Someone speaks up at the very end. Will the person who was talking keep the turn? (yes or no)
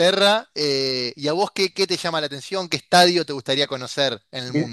no